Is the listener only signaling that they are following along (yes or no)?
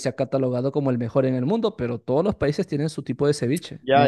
no